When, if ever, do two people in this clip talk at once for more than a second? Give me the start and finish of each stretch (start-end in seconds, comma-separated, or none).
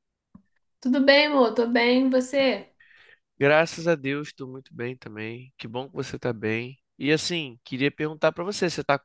none